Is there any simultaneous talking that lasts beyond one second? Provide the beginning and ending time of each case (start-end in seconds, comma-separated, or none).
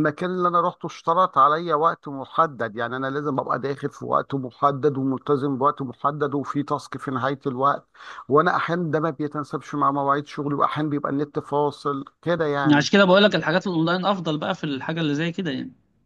none